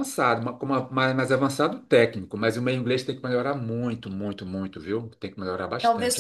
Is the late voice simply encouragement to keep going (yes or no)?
no